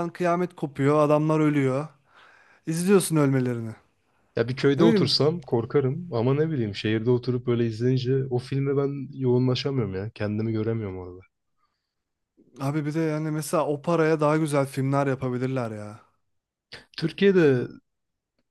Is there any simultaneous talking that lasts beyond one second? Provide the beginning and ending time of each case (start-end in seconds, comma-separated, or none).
none